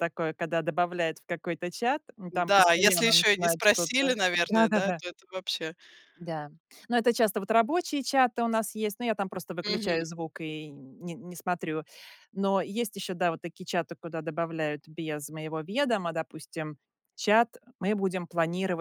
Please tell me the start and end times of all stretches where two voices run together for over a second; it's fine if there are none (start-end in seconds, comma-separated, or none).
2.3-5.0